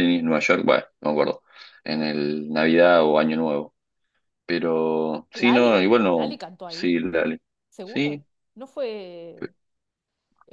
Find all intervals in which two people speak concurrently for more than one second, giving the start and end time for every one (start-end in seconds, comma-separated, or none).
5.3-7.0